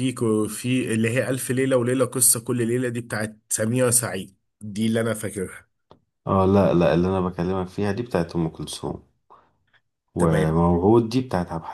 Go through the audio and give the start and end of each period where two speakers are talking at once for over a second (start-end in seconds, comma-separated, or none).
none